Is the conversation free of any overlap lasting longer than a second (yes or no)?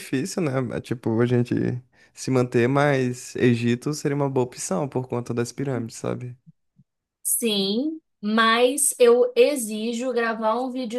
yes